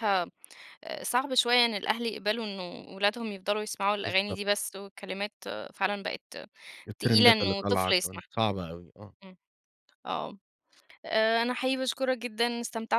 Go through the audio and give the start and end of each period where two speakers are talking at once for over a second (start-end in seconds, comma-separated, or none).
7.0-8.3